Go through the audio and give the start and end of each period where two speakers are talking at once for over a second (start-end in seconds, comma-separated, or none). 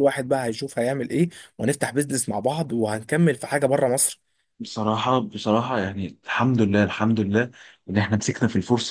none